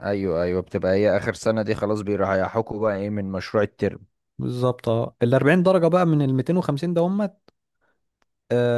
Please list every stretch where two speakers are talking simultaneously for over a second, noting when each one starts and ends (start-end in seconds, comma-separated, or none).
none